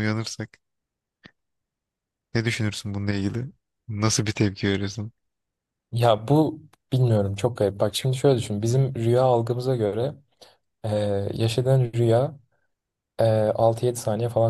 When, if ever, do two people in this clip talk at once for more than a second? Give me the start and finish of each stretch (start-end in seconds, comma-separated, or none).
none